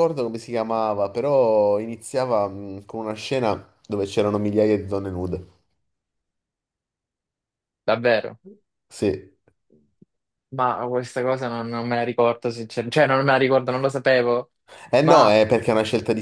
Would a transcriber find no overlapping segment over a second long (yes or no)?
yes